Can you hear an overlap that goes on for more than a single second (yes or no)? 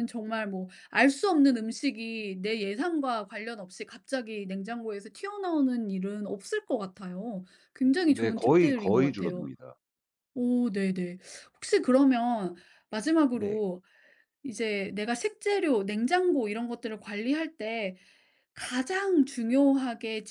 yes